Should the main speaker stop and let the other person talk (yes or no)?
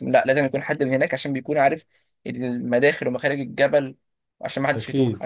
no